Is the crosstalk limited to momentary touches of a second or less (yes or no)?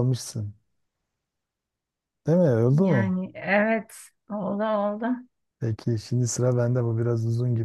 yes